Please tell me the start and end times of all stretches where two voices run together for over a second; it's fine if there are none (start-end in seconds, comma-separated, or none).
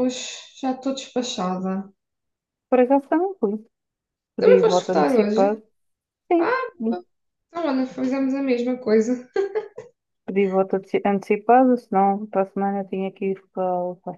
4.4-5.6